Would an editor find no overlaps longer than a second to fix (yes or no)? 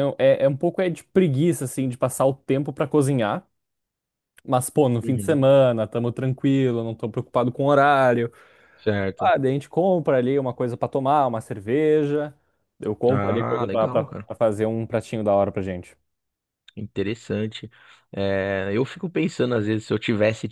no